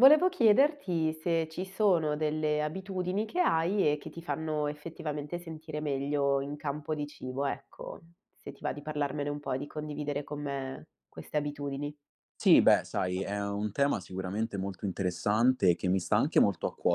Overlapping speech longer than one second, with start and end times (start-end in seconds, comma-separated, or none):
none